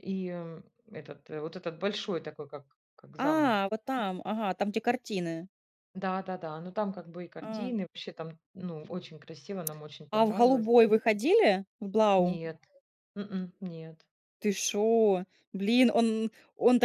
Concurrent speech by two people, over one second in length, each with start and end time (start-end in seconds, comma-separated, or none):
none